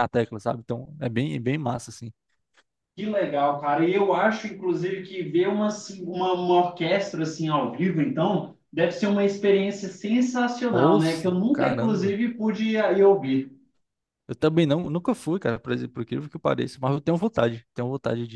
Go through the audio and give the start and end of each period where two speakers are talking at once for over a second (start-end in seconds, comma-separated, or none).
10.7-12.2